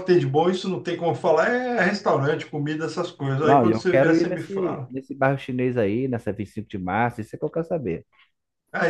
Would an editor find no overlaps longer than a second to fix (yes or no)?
no